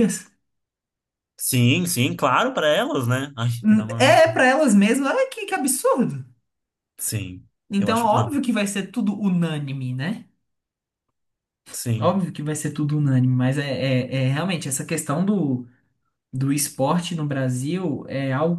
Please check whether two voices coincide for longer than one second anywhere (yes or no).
no